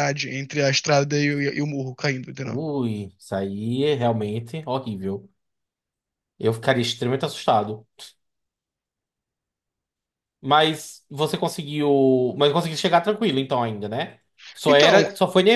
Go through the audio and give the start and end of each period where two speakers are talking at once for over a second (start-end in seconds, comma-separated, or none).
none